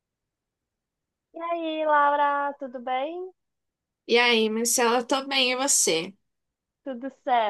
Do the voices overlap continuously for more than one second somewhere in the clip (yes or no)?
no